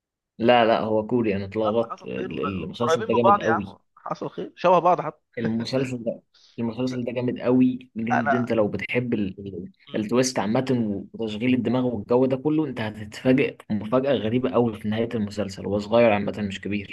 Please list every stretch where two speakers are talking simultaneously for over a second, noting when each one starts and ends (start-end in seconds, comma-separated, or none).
1.7-3.8